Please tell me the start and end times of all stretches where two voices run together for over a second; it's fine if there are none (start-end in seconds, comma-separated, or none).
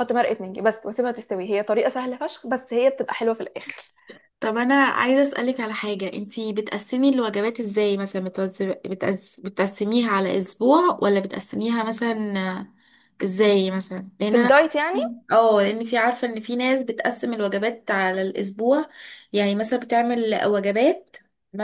none